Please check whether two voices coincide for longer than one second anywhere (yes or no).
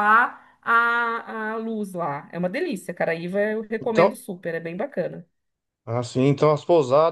no